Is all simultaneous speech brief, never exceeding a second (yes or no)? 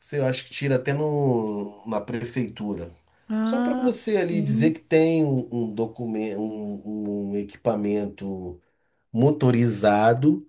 no